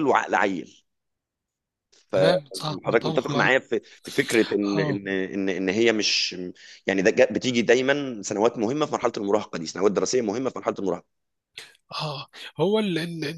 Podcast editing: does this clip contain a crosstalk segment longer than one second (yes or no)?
yes